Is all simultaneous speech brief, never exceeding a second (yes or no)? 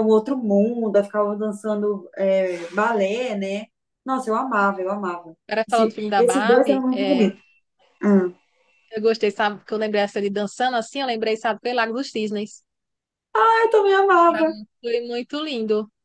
no